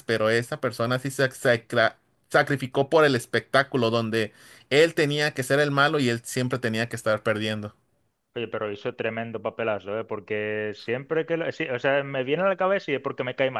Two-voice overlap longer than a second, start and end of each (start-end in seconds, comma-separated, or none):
none